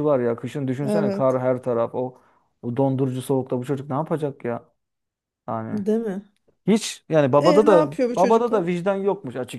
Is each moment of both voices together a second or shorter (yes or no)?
no